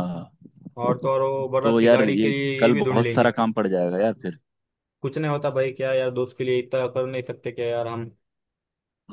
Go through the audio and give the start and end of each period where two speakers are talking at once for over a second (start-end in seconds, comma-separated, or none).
1.6-3.3